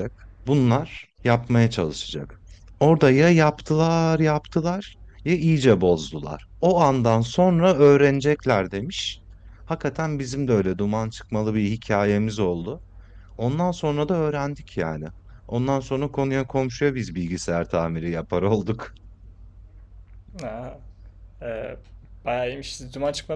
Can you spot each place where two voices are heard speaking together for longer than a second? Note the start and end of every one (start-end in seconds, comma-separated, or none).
none